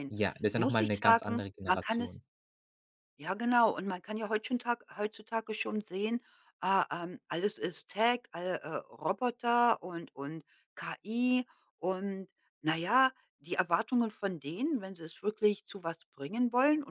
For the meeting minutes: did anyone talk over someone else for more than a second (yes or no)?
yes